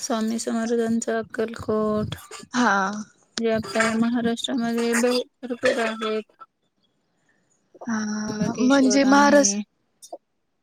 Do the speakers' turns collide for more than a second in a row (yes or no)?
yes